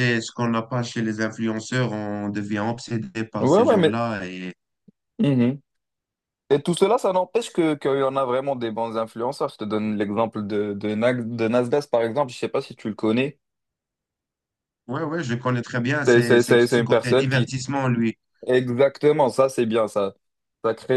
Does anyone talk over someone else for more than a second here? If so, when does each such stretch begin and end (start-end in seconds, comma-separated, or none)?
16.1-17.5